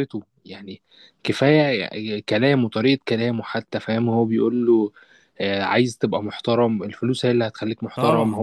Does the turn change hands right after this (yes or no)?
yes